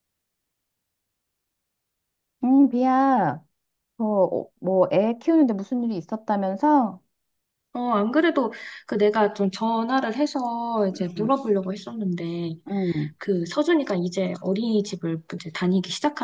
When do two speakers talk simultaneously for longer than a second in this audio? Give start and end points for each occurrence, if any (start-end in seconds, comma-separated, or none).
none